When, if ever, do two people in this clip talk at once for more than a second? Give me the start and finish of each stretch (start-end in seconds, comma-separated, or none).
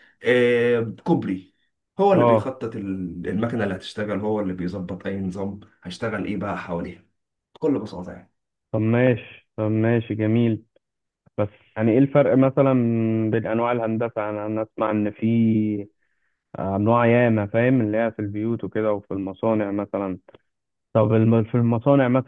none